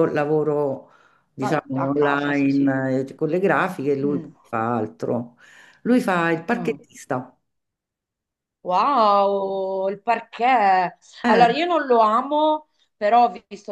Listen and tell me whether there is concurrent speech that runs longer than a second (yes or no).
yes